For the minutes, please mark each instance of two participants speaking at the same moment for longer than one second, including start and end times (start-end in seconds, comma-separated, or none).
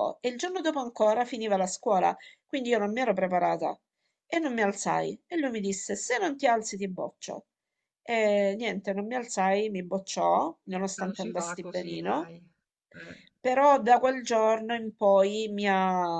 11.0-12.3